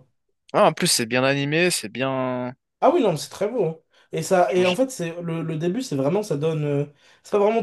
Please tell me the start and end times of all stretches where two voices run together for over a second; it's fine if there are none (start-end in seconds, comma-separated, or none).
none